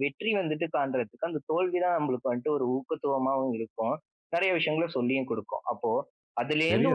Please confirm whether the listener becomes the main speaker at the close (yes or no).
no